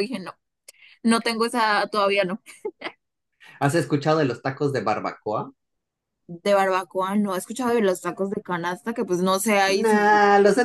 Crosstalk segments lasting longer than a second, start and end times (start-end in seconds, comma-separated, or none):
none